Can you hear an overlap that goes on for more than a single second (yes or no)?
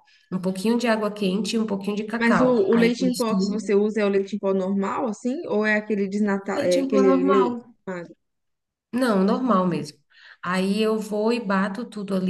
yes